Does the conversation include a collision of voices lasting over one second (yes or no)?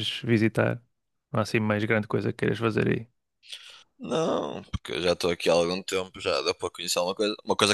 no